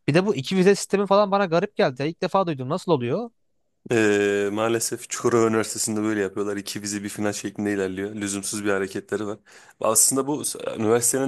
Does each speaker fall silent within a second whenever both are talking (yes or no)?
yes